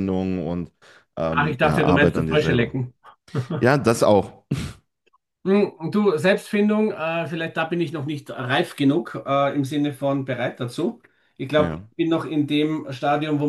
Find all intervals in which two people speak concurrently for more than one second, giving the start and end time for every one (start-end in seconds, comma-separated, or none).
1.3-2.8